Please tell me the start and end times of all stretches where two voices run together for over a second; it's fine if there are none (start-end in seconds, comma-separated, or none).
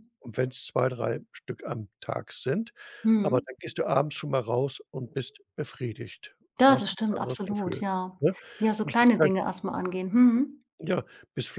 6.6-7.8